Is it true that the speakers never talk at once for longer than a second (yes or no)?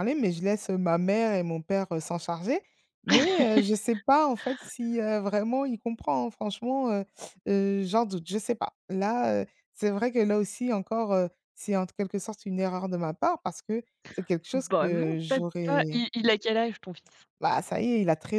no